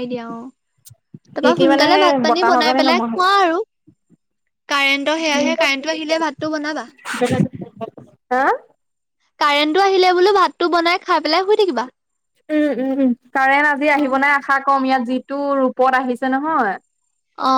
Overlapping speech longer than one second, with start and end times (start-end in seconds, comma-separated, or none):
1.4-3.2